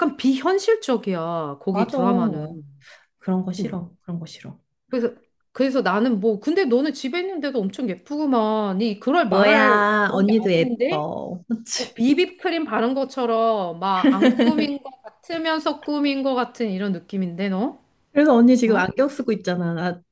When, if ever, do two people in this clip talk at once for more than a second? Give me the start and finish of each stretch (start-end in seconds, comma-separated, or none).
9.3-11.1